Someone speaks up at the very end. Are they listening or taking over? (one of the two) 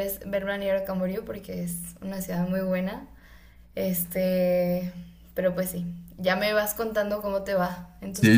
taking over